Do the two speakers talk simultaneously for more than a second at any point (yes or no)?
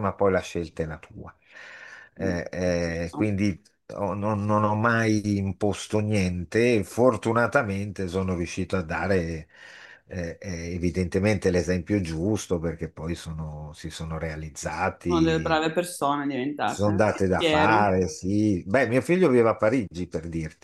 yes